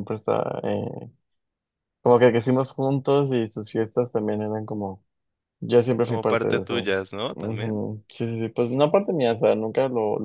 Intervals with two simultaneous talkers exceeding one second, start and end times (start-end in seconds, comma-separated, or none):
6.0-7.8